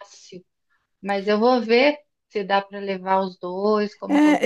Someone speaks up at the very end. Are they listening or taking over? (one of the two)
taking over